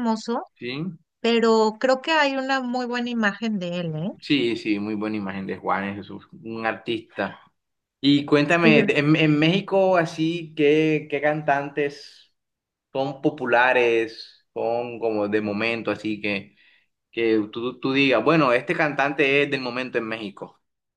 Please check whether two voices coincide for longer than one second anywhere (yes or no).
no